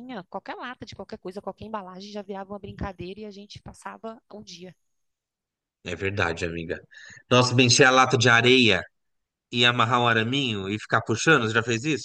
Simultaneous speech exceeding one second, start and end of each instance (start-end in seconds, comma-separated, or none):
none